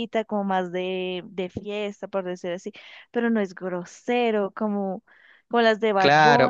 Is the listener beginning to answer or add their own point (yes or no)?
yes